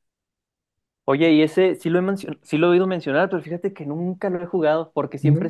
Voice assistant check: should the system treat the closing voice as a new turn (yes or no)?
no